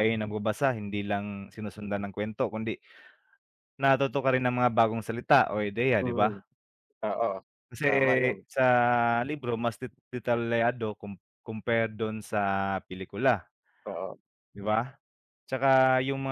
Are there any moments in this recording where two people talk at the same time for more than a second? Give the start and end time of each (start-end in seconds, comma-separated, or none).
none